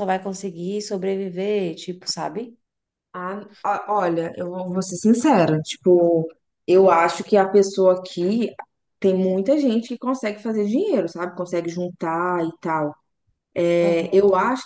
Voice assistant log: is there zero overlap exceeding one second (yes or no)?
yes